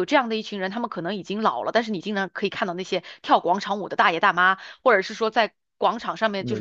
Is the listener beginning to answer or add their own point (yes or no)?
no